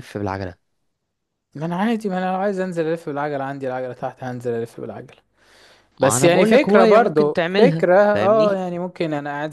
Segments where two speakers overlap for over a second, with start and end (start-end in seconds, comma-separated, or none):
6.0-8.6